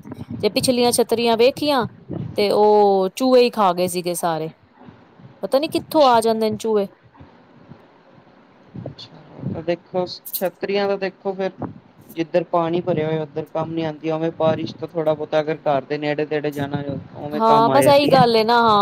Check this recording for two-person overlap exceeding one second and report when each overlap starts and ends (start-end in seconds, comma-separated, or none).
none